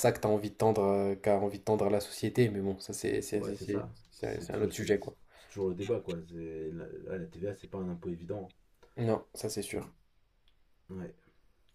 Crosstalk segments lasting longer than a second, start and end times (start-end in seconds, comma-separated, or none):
3.4-4.9